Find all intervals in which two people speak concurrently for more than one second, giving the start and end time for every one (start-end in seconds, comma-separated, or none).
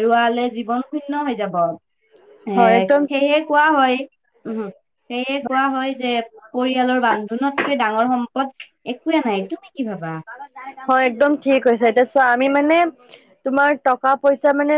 none